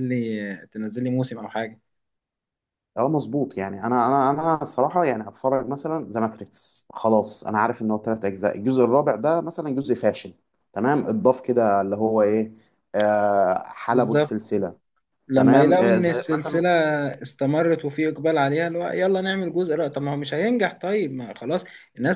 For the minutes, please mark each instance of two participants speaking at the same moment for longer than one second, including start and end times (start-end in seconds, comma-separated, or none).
15.3-16.6